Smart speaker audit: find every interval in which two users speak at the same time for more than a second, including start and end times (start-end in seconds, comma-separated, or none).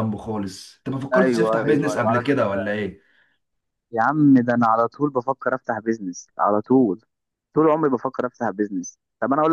1.1-2.8